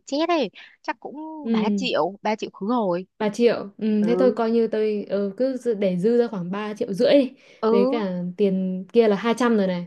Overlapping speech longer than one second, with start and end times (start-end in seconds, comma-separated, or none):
none